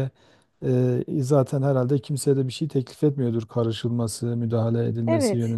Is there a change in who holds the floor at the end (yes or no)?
yes